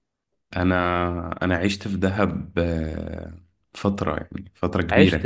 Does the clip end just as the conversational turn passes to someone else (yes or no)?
no